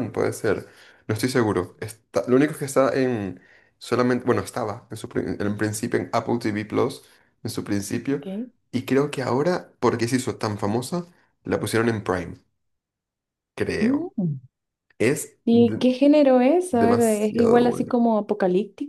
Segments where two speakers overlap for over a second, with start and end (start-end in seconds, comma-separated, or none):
16.7-17.9